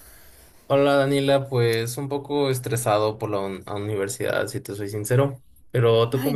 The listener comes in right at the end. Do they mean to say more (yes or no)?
yes